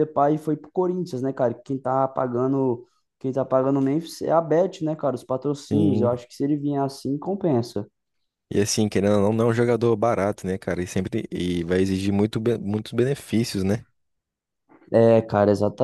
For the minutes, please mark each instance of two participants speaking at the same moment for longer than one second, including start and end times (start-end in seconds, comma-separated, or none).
none